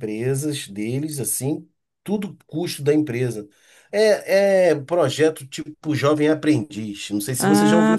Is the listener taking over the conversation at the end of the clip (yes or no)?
yes